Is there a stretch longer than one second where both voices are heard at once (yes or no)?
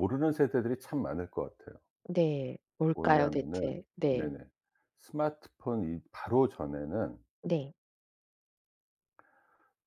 yes